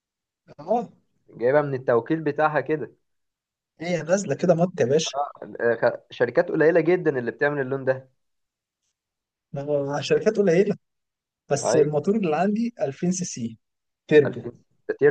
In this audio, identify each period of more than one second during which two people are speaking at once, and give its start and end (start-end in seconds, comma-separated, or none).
none